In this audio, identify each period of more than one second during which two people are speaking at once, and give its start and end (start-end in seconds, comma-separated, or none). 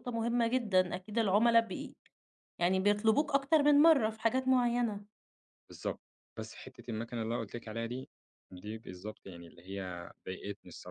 none